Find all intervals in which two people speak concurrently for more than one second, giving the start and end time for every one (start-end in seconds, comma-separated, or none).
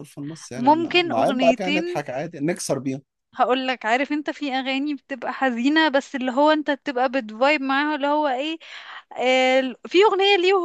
0.6-2.0